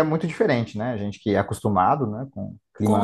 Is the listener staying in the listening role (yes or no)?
no